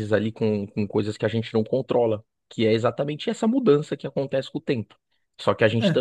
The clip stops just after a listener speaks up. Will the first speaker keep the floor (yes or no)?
yes